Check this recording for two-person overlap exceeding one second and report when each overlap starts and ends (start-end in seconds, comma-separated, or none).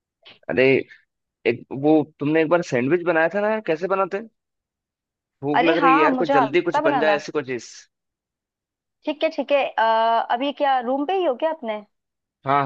5.6-7.2